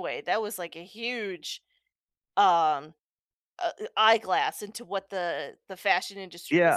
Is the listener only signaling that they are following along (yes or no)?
no